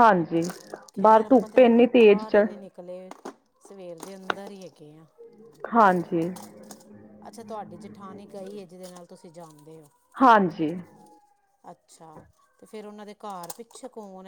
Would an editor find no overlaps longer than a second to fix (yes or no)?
no